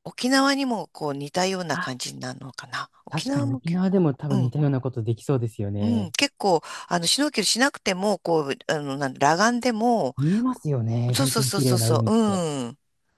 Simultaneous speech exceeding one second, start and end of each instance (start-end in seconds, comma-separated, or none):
3.1-4.5, 11.1-12.4